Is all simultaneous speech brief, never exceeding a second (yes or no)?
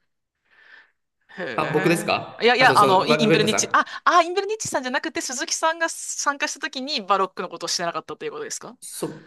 no